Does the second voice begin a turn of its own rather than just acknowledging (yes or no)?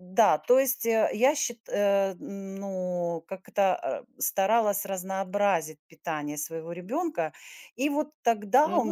yes